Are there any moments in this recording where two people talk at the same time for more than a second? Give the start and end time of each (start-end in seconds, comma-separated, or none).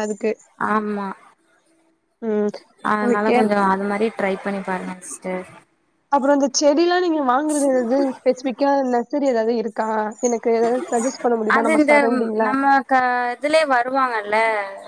none